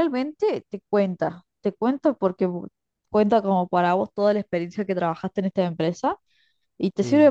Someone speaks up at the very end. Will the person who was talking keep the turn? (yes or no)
yes